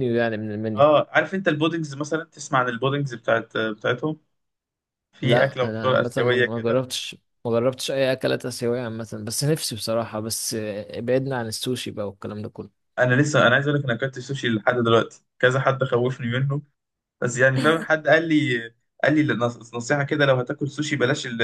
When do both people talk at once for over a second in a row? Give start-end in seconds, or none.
5.2-6.8